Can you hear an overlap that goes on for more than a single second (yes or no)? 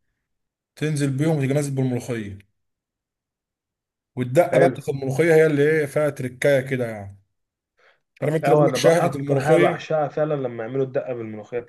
yes